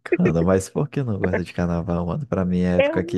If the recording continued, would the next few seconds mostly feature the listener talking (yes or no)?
no